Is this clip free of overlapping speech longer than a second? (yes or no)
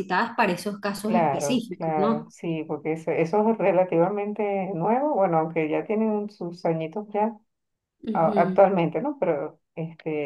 no